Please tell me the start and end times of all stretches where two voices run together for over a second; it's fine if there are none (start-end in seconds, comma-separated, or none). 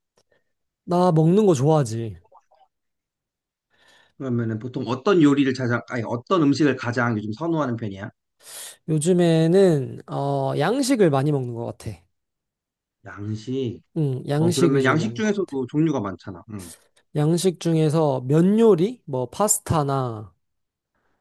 14.3-15.6